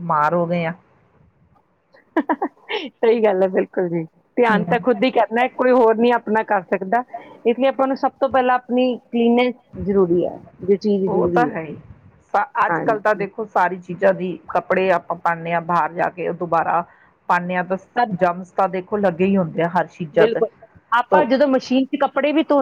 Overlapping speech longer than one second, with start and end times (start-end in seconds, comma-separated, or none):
none